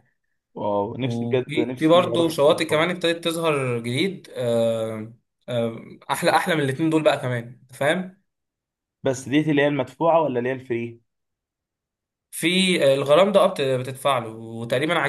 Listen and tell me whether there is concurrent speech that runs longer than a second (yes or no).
yes